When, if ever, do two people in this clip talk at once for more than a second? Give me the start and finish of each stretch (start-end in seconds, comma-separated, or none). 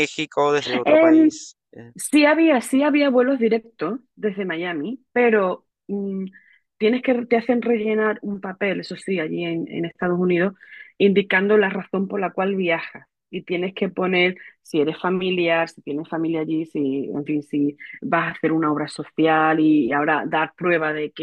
none